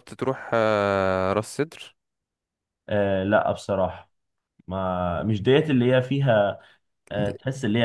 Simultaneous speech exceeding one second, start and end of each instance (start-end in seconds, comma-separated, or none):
none